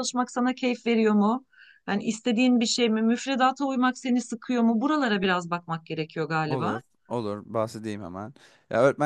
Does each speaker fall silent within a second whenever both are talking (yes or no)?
yes